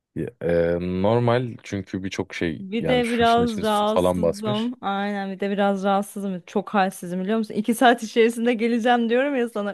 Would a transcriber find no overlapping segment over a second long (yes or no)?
no